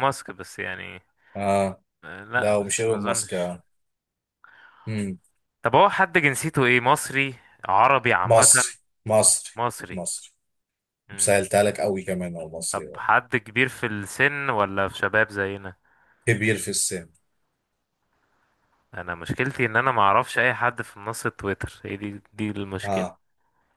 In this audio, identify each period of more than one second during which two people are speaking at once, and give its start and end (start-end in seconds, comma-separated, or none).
2.4-3.6